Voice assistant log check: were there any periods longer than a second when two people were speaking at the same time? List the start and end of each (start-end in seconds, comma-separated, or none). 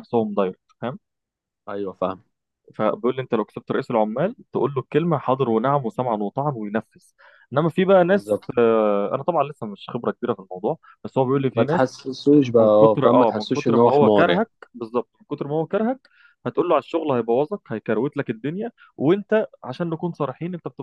12.6-14.4